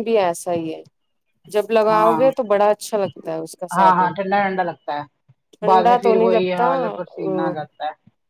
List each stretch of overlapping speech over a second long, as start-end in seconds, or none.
5.5-7.3